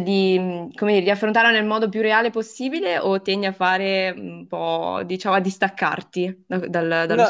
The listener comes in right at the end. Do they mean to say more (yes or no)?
yes